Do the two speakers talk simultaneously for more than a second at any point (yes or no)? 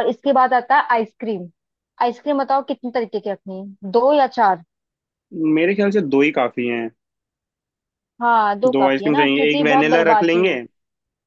yes